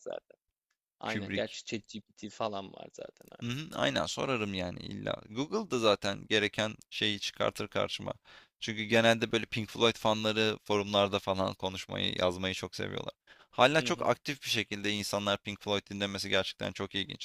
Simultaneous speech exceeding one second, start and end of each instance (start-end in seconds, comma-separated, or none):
none